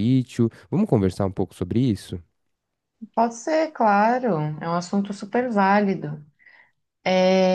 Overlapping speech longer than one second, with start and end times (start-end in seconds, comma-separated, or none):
none